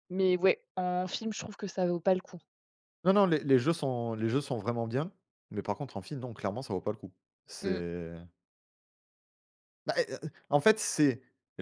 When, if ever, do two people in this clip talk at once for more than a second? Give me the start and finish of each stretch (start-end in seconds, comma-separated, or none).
none